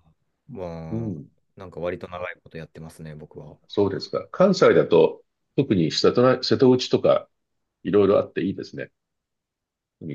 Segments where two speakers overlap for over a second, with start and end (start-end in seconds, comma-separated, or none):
none